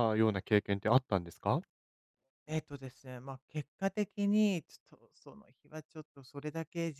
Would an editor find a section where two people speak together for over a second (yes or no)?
no